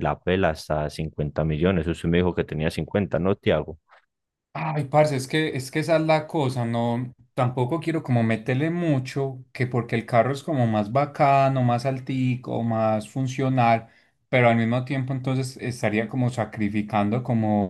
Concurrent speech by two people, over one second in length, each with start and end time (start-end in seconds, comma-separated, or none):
none